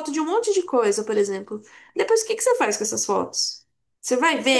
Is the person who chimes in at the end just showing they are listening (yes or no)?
no